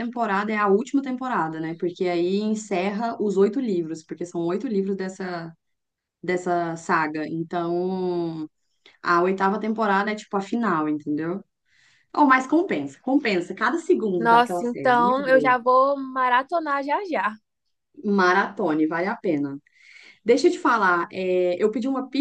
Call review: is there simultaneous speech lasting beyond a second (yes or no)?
yes